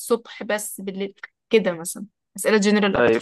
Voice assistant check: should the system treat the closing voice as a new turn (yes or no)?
yes